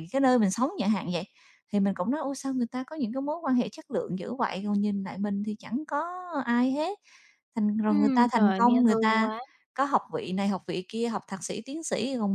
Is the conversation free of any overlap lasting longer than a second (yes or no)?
no